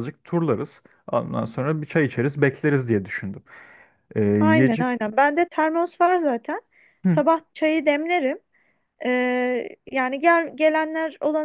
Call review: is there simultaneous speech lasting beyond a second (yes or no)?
no